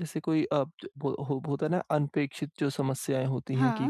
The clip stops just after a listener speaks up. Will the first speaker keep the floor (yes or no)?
yes